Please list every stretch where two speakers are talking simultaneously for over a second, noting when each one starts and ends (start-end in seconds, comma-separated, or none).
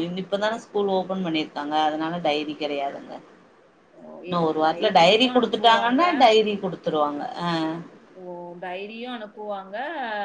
4.3-6.0